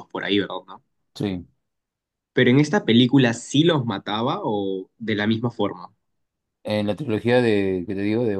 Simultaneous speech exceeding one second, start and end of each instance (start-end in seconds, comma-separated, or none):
none